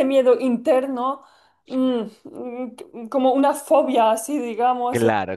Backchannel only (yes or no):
no